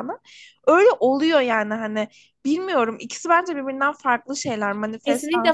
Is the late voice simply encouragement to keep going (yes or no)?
no